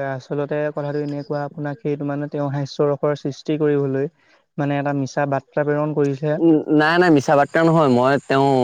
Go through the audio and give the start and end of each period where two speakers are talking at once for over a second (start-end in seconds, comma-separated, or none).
none